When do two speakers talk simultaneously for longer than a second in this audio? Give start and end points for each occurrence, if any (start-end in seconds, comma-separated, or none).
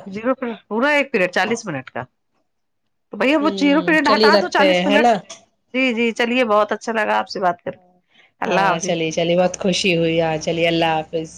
3.2-5.1